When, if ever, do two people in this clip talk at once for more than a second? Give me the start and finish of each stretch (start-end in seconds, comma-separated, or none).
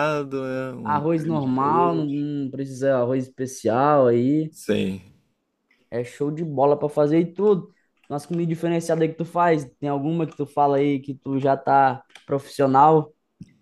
0.8-2.3